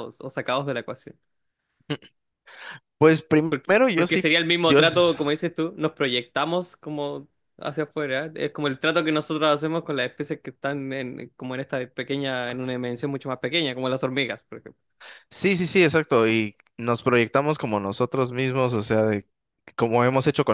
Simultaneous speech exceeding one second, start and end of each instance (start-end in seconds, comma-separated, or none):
3.5-5.2